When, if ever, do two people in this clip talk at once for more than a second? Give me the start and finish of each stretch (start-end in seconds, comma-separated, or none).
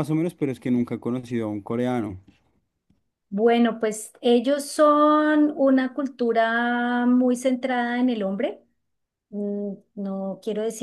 none